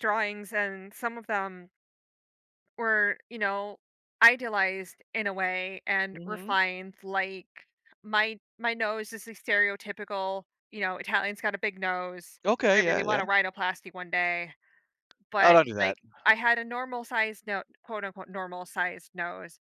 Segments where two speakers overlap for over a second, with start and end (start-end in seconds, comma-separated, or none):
none